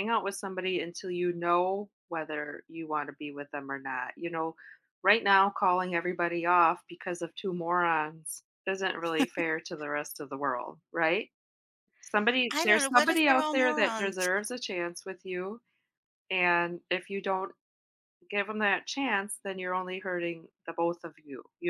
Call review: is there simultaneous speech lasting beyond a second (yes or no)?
yes